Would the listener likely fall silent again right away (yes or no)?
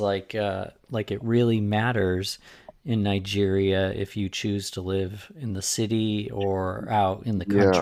no